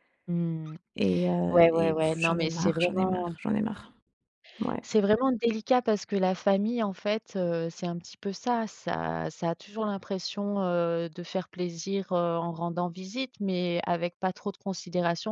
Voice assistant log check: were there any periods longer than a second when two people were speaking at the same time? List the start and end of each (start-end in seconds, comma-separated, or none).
1.5-3.3